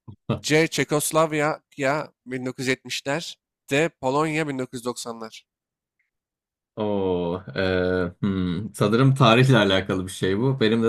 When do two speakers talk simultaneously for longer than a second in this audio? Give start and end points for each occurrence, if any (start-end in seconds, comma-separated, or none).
none